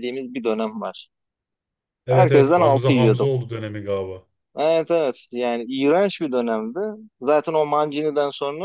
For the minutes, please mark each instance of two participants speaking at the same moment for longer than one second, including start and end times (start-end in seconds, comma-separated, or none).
2.1-3.3